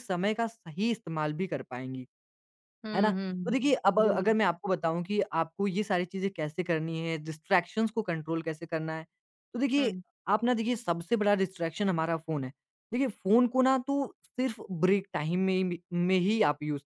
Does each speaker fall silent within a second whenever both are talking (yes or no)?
no